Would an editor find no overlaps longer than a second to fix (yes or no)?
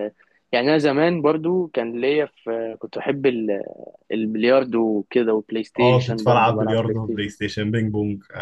no